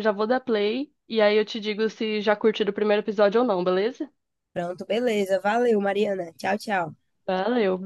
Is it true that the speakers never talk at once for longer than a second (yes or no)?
yes